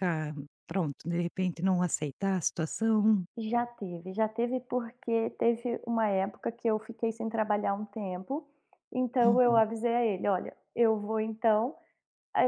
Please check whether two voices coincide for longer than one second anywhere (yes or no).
no